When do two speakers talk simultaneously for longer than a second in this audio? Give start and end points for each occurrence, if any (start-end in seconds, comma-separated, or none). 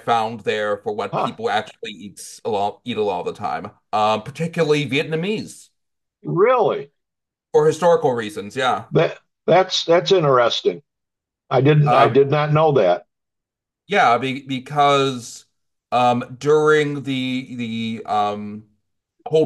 none